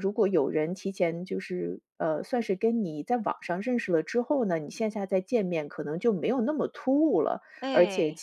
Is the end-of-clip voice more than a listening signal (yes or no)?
no